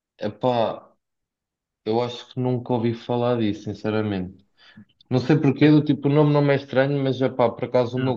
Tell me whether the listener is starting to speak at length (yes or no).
no